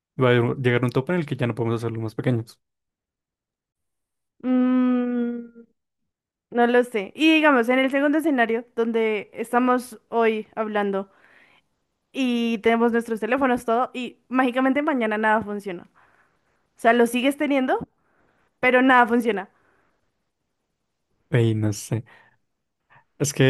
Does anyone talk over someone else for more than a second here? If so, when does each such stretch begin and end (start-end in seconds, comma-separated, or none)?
none